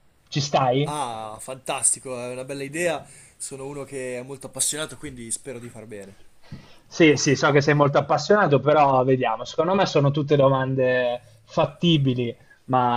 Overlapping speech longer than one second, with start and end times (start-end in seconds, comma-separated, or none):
none